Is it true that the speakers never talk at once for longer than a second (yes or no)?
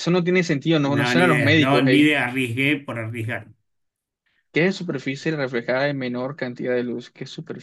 no